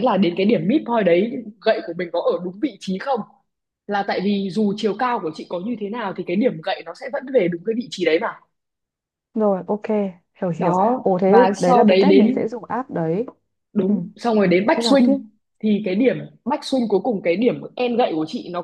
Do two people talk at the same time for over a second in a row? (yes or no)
yes